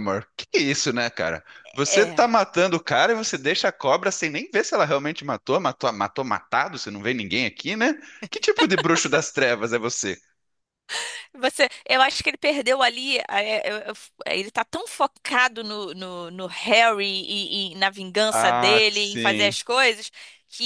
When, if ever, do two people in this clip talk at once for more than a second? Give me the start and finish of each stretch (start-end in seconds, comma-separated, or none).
18.3-19.6